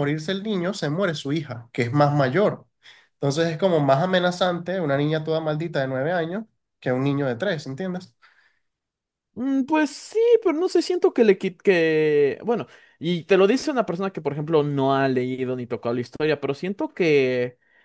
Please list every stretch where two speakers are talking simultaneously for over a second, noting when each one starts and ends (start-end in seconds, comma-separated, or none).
none